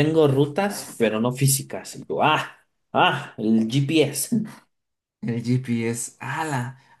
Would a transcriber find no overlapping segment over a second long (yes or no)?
yes